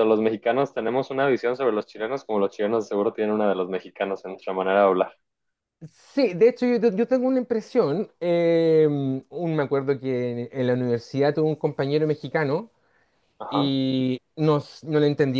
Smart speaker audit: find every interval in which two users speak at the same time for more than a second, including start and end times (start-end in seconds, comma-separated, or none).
none